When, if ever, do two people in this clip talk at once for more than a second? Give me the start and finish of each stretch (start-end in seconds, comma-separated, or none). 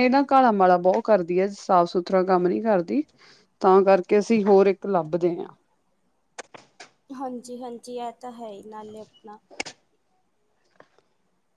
none